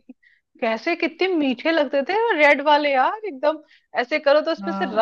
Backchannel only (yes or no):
yes